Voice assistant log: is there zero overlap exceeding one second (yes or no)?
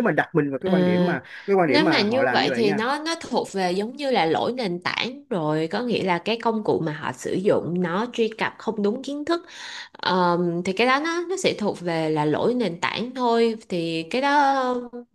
no